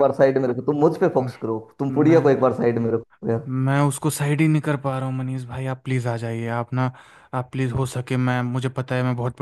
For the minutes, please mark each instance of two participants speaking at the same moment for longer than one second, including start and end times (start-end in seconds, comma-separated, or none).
none